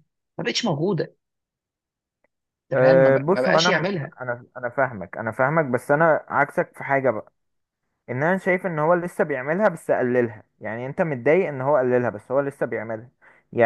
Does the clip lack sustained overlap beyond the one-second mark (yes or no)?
no